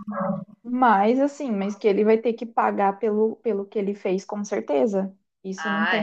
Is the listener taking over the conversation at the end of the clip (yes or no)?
no